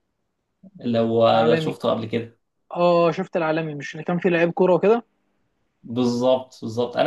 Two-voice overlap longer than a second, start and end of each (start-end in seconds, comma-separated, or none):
none